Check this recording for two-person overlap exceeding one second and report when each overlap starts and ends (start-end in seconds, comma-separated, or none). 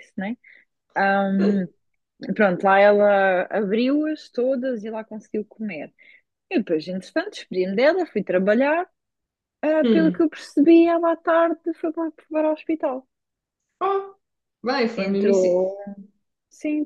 none